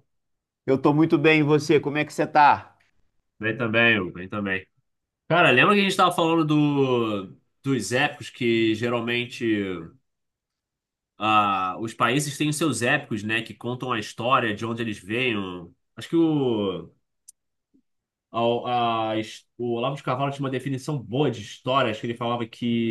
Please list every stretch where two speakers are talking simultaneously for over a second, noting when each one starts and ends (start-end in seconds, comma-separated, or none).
none